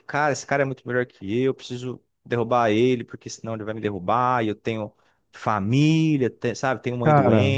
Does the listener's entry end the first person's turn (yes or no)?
no